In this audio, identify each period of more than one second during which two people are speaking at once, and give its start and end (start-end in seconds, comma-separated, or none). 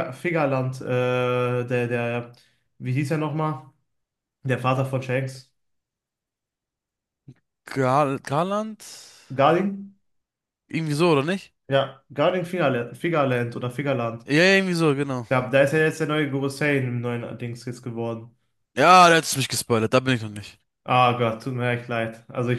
none